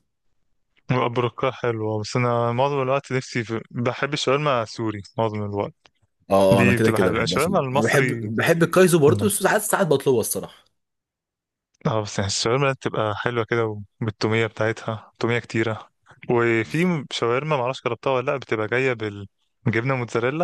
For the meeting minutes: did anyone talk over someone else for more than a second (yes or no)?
yes